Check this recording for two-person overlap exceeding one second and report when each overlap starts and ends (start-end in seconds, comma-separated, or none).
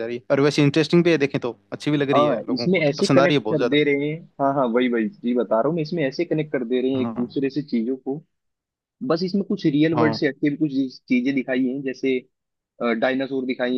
2.1-3.8